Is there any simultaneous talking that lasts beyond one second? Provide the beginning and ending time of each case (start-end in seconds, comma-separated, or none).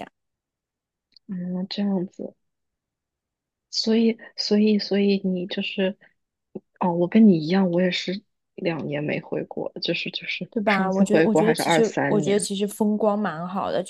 10.5-12.5